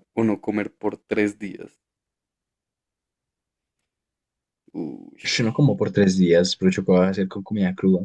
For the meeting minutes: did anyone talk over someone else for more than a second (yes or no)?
no